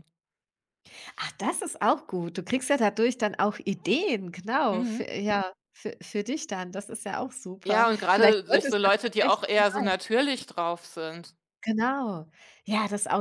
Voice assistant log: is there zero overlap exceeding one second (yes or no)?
no